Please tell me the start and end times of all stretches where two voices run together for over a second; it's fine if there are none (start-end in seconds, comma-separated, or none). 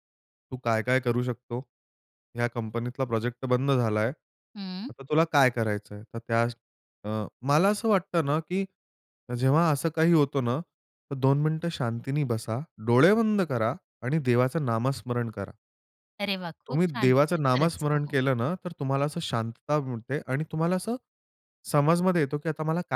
16.7-18.2